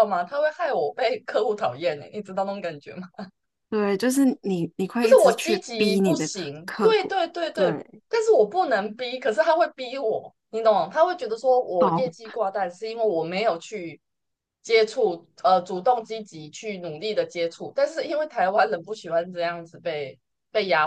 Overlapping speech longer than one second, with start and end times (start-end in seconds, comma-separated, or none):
5.0-8.0